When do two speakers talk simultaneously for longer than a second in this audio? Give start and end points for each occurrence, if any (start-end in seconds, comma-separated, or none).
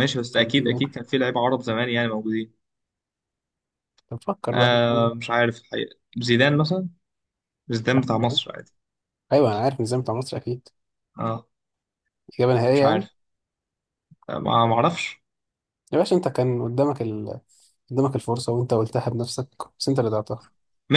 none